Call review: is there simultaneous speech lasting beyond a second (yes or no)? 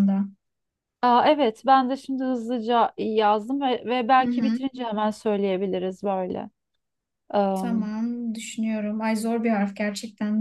no